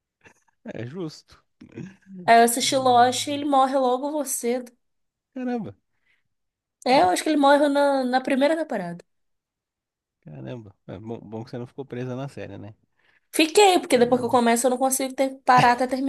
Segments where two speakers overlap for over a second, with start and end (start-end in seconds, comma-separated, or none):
none